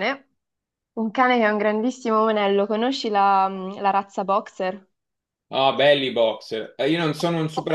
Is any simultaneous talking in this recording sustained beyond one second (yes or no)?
no